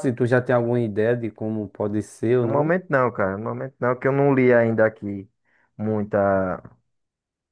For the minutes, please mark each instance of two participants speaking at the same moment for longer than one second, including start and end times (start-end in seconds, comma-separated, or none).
none